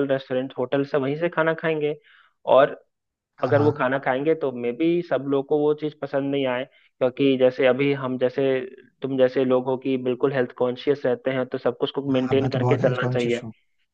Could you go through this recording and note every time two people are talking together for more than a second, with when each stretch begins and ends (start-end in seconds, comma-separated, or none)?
12.1-13.4